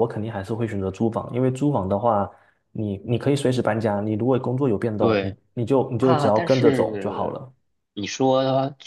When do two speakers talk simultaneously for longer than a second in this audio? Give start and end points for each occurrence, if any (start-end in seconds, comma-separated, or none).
6.0-7.4